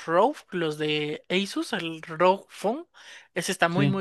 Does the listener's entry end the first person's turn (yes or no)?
no